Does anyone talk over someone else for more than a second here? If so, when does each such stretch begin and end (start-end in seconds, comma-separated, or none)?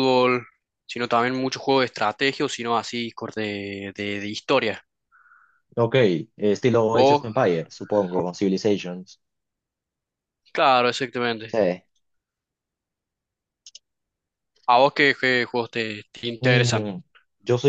none